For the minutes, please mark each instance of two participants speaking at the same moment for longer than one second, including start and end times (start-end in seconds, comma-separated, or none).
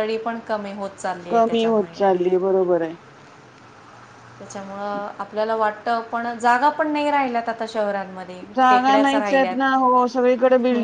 none